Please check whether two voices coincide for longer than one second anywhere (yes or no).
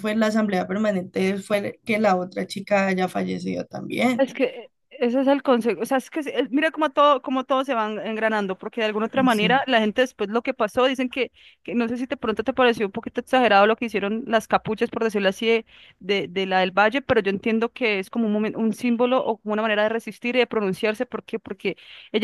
no